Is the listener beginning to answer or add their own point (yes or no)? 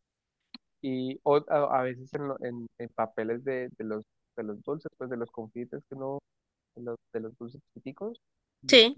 no